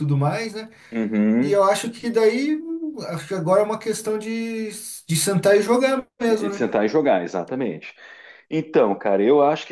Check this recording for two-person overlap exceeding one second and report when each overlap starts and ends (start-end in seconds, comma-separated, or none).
none